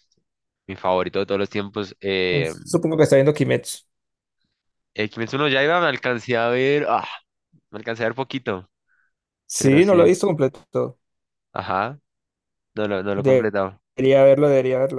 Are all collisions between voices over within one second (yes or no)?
yes